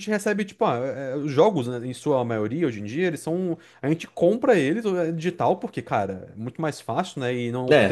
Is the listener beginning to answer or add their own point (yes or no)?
yes